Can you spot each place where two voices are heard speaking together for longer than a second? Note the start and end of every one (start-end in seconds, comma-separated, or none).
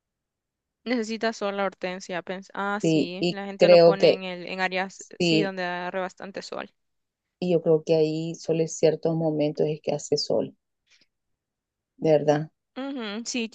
2.8-4.2